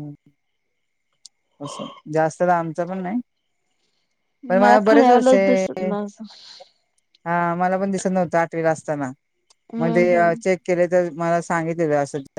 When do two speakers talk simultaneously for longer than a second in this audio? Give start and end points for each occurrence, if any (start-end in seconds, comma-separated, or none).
4.5-5.9